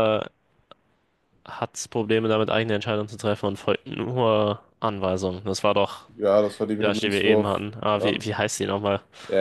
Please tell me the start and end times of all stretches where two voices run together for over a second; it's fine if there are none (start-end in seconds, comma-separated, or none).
6.8-8.2